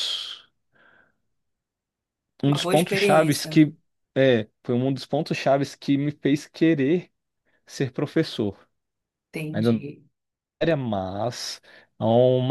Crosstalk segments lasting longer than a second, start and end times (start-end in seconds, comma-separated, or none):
2.5-3.7